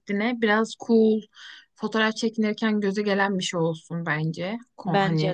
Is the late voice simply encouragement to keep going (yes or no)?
yes